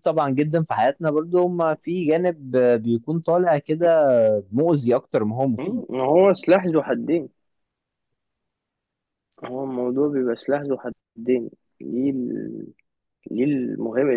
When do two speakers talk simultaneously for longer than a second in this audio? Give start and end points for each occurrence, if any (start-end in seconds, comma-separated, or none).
none